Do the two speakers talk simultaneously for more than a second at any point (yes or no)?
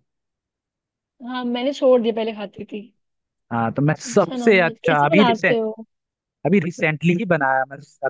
yes